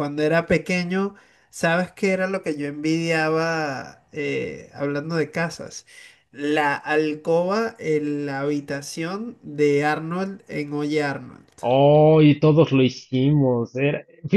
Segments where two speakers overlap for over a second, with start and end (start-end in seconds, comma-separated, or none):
none